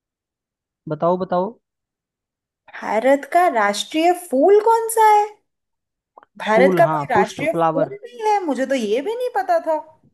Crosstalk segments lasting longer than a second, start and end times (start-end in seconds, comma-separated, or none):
6.5-7.9